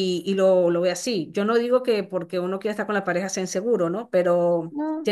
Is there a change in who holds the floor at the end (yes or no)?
no